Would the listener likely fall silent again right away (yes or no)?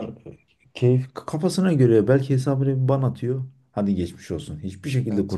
yes